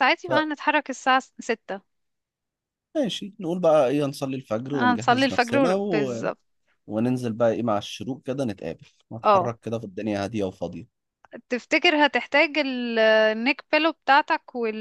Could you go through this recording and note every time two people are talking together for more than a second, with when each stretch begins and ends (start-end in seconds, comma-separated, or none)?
4.7-6.3